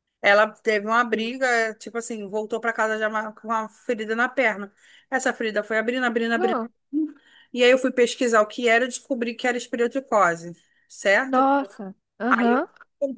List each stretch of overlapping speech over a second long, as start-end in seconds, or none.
none